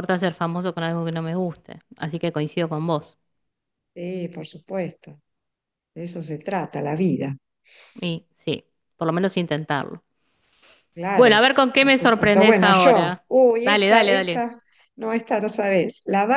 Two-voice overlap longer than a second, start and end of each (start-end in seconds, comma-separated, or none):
11.1-14.5